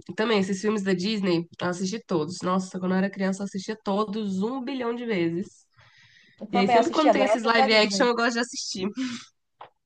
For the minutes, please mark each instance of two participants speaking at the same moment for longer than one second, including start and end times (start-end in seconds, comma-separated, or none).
6.5-8.1